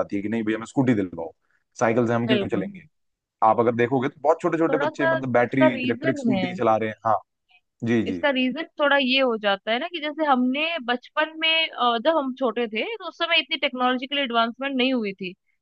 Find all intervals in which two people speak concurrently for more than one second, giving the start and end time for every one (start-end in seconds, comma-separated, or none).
4.7-6.4